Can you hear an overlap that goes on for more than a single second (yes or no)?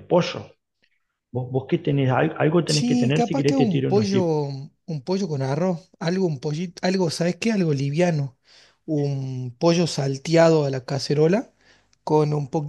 yes